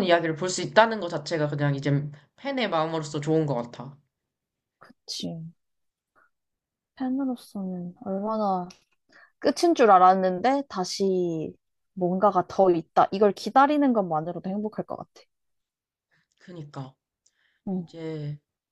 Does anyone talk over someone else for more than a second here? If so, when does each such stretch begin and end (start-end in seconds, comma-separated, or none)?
none